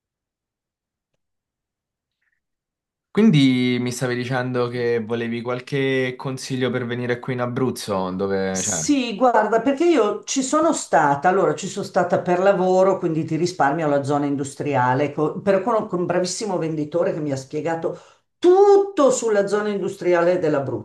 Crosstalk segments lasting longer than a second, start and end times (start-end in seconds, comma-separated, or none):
none